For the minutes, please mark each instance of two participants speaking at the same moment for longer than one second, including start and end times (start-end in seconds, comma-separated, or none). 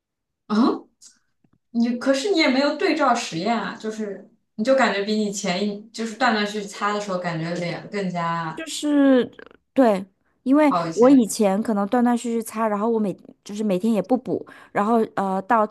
none